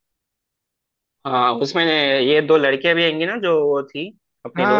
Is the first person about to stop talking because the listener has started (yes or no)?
yes